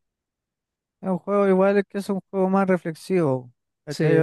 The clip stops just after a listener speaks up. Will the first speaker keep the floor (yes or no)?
yes